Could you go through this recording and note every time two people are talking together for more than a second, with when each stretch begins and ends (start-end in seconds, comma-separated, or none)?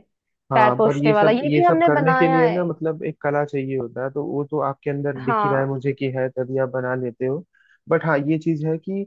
0.5-2.6